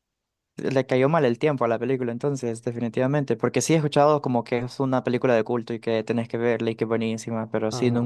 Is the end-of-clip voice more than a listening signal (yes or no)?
no